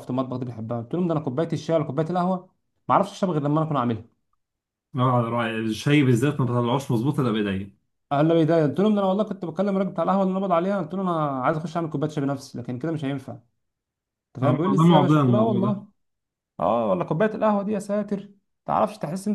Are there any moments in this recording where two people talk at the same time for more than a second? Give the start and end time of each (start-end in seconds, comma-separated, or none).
14.4-15.8